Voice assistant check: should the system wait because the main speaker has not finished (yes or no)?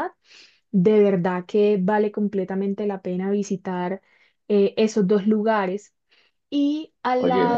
no